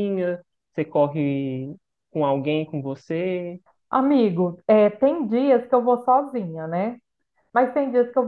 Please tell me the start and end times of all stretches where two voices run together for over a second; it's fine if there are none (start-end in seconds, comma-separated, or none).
none